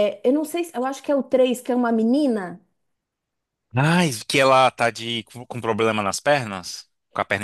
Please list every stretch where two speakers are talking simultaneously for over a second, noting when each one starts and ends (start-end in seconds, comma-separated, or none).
none